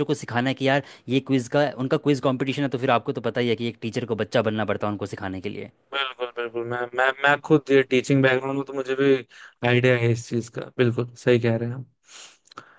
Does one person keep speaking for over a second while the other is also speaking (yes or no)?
no